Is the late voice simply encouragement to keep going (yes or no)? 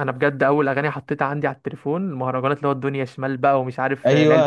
no